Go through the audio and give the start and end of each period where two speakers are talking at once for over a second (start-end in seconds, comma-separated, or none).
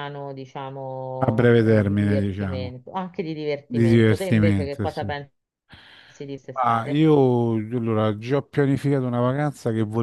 1.3-2.8, 3.7-5.1